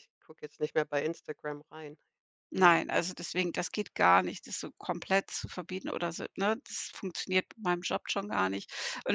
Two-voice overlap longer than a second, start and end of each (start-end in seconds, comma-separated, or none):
none